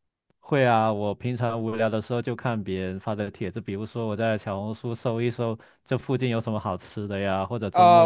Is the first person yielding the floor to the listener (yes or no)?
yes